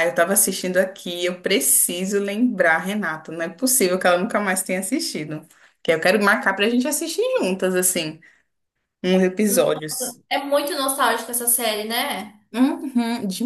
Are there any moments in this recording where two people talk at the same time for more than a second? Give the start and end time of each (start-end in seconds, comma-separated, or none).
none